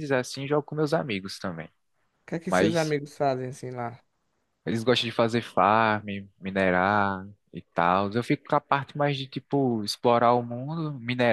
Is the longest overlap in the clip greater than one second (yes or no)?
no